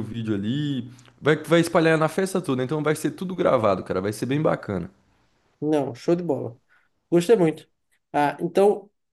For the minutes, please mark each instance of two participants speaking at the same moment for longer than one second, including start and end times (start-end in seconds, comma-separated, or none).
none